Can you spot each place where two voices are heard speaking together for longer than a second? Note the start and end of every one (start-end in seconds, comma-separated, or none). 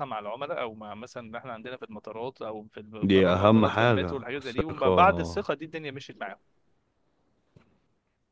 3.0-5.0